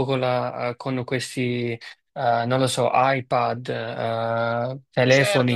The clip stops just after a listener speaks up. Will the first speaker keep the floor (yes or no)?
yes